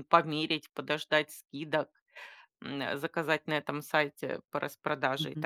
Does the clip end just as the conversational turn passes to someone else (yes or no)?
yes